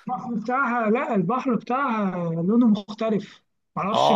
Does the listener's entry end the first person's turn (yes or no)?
yes